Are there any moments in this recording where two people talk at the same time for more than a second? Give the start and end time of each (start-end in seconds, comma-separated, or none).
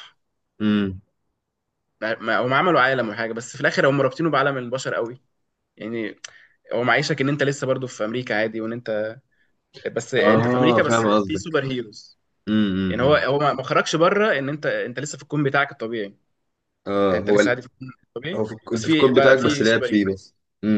10.2-11.5, 18.4-20.2